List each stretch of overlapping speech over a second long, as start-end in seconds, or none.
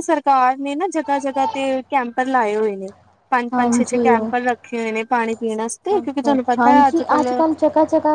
none